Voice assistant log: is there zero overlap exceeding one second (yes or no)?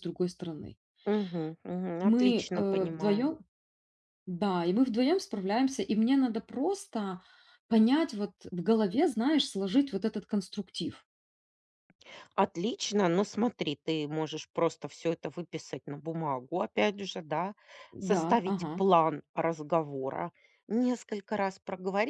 no